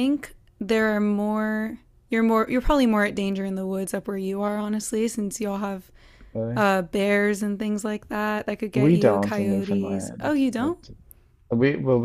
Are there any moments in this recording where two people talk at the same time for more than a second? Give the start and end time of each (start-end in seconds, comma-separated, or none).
8.7-10.7